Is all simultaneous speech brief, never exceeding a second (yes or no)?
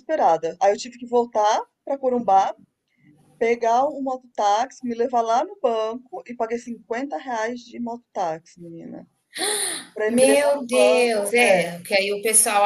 no